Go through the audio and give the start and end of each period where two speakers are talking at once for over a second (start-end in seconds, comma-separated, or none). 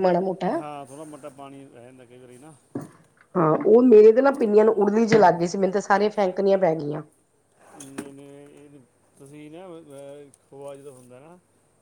none